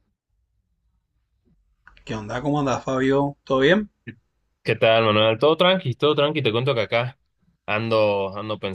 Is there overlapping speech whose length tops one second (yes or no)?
no